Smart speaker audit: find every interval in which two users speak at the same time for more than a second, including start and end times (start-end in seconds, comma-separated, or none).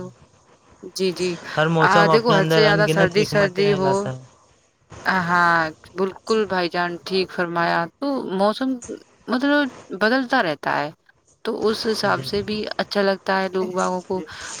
1.9-3.9